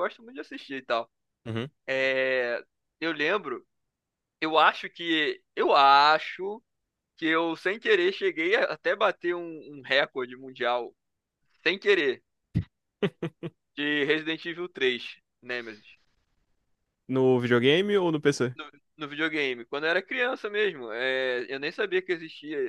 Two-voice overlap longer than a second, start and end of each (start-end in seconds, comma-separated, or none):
none